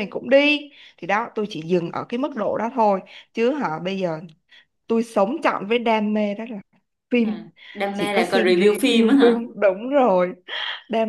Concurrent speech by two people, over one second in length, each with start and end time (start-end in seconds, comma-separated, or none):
7.9-9.4